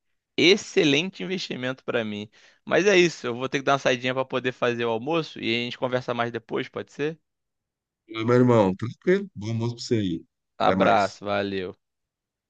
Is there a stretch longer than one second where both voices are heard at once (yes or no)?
no